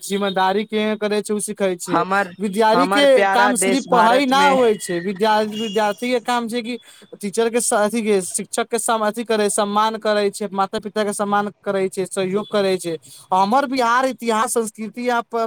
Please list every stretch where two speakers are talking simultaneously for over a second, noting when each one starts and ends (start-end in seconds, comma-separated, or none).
2.7-4.5